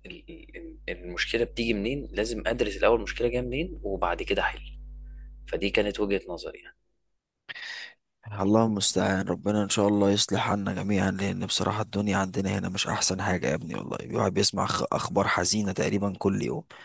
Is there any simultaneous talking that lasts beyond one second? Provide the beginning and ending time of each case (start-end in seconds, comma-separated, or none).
none